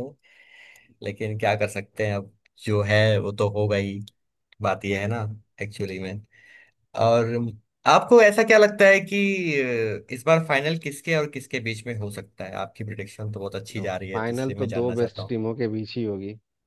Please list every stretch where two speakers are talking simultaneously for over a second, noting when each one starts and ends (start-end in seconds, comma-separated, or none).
13.8-15.3